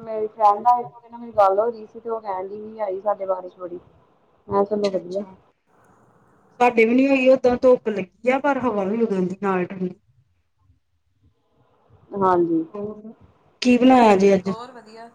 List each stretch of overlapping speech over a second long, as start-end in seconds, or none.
none